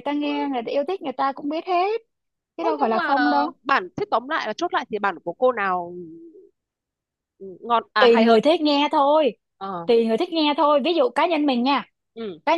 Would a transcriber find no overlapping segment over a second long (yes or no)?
yes